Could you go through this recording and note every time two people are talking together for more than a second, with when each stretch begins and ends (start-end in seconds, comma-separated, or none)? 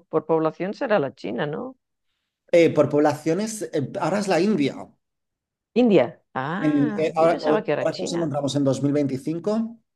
6.6-8.3